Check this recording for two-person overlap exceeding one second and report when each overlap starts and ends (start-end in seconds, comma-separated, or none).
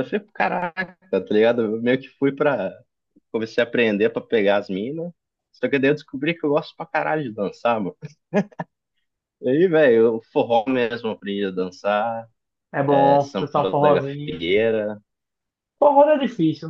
12.9-14.4